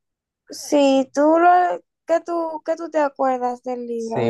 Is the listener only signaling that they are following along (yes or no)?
no